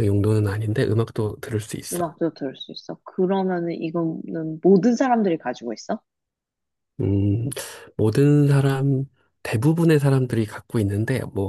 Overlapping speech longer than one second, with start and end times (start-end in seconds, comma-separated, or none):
none